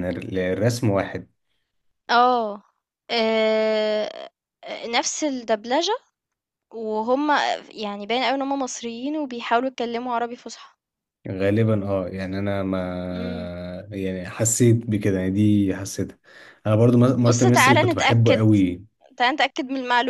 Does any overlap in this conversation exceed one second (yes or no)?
yes